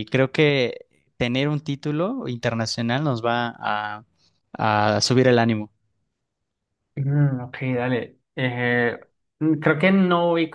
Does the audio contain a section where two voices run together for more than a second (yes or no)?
no